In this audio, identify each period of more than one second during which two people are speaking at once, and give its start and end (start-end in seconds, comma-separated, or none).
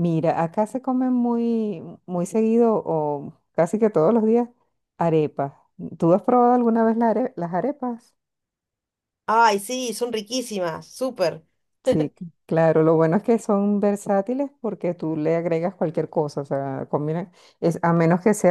none